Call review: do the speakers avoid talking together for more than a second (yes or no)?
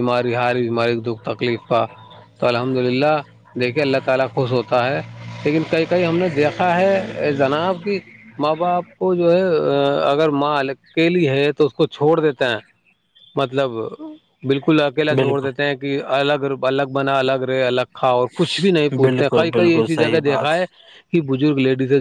no